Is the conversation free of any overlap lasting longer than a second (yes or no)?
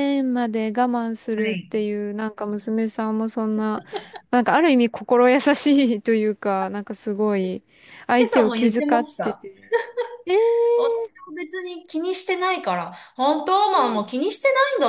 no